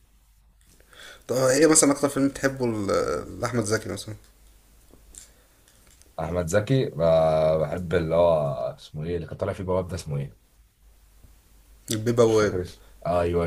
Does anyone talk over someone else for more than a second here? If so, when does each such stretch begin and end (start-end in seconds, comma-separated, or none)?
none